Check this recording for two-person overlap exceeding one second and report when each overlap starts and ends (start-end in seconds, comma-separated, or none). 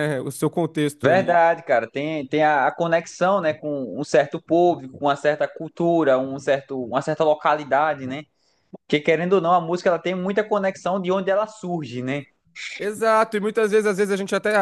none